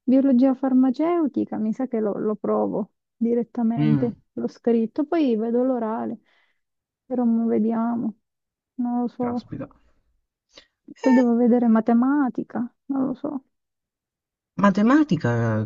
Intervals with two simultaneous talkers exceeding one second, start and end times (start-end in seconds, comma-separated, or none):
none